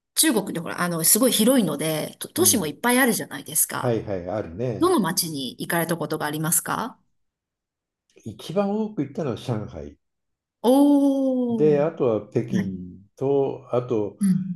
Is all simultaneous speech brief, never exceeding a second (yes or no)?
yes